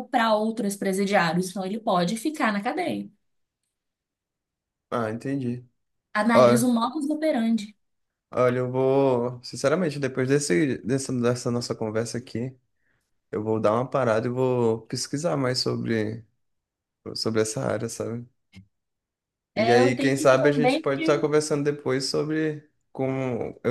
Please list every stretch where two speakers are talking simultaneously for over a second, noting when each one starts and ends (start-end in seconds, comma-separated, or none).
19.5-21.0